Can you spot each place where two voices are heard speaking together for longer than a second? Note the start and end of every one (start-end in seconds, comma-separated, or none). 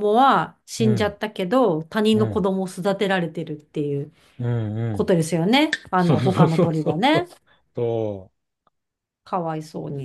6.0-7.3